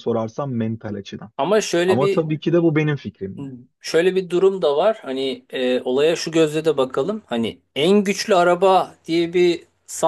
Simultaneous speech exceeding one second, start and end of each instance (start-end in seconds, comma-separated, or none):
none